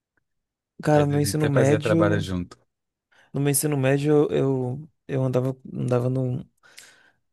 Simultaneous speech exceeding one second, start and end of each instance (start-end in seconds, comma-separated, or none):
0.9-2.3